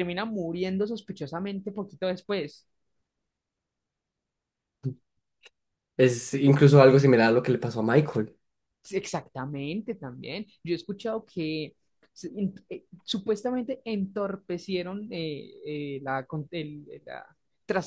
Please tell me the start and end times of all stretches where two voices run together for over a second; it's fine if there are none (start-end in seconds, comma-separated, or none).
none